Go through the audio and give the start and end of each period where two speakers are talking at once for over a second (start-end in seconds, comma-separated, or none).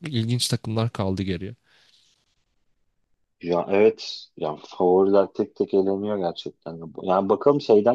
none